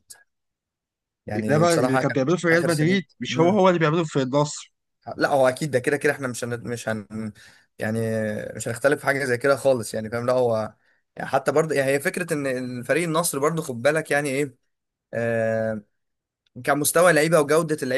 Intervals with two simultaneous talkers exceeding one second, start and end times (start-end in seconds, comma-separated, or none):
1.4-3.6